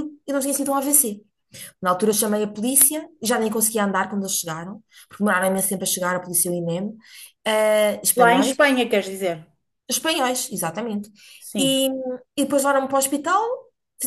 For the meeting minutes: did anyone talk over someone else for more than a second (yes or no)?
no